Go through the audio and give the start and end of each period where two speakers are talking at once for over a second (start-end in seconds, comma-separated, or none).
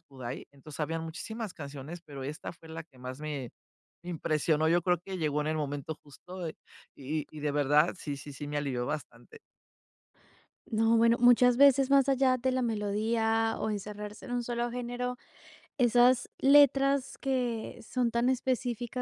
none